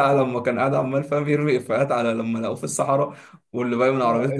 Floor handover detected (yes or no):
yes